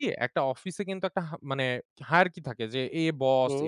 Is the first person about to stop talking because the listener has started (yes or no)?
no